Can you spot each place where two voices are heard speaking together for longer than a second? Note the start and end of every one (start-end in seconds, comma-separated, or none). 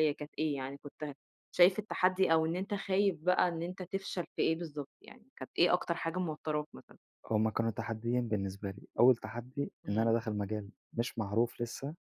none